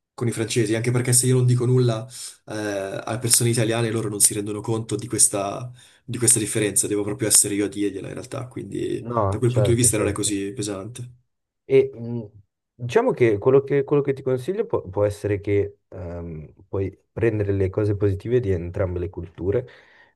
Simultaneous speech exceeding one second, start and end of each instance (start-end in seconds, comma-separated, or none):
9.0-10.4